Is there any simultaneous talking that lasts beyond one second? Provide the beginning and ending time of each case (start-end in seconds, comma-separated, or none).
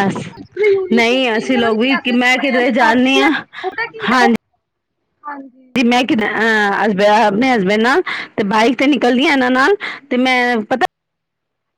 0.9-3.3